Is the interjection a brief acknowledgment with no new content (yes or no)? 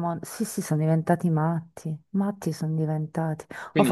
yes